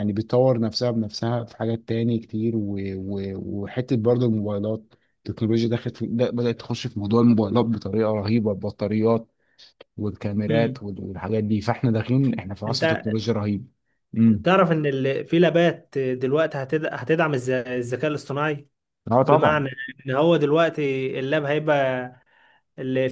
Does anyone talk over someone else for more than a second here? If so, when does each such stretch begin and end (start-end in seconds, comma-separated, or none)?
none